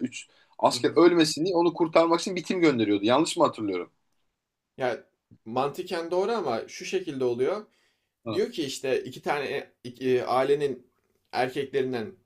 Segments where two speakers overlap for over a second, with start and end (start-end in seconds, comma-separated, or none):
none